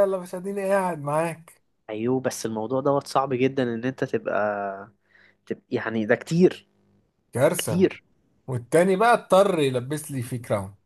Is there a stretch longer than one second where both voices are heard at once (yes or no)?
no